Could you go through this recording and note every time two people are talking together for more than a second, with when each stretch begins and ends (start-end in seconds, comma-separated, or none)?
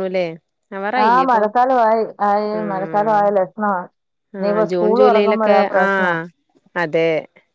4.4-6.1